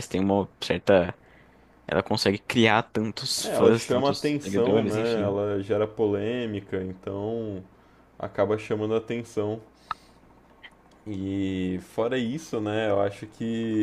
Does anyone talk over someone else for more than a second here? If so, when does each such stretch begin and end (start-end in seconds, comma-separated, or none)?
3.4-5.4